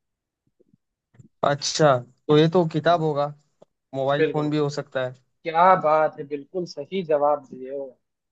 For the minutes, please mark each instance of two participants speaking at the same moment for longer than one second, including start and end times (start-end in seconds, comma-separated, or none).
none